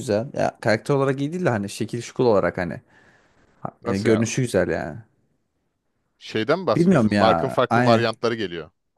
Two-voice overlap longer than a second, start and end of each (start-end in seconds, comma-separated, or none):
6.8-8.1